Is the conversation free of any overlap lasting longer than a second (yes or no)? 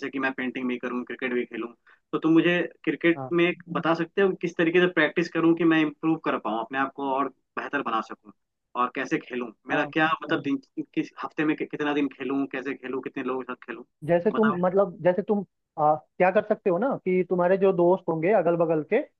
yes